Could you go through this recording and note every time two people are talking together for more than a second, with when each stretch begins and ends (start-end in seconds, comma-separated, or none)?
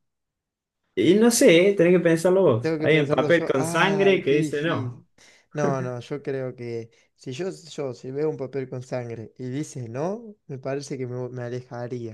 2.6-5.0